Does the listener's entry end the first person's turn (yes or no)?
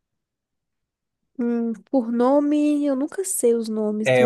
yes